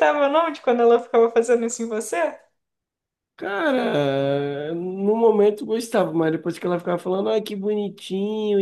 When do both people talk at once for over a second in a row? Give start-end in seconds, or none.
none